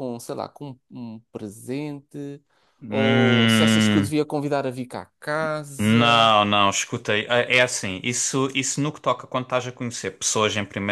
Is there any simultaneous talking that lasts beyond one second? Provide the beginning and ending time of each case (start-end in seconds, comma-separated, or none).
2.9-4.1